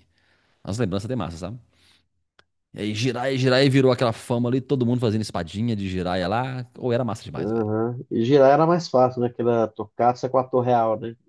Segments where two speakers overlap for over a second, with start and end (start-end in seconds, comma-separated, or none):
none